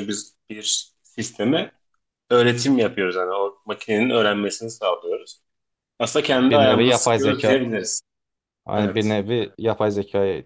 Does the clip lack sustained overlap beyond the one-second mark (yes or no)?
no